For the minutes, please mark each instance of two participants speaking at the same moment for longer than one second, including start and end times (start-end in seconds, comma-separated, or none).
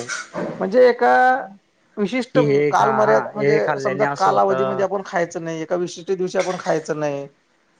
2.3-4.8